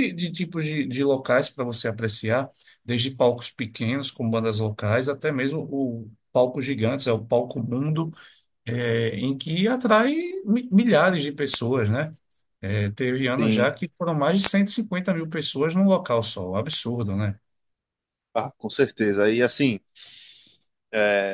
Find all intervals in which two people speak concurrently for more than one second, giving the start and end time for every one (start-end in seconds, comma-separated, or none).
none